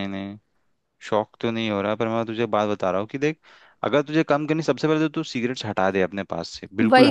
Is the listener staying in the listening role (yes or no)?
no